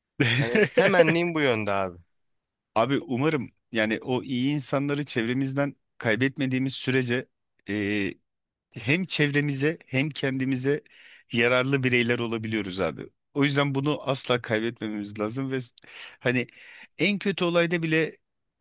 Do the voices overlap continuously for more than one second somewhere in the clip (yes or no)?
no